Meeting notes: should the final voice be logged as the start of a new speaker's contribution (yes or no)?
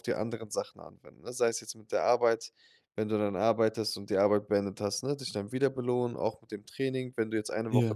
no